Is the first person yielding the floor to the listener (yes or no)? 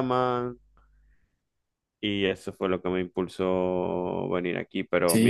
yes